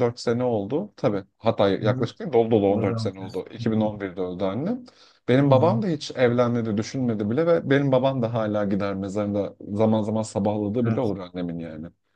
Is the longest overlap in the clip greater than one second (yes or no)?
yes